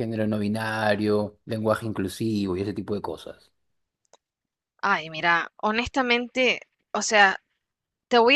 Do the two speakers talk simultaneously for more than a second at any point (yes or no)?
no